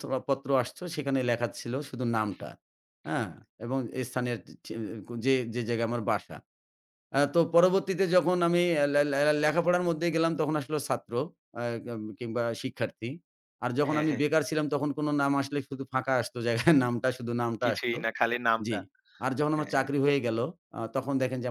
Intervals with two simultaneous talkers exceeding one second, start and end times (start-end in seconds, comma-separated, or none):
none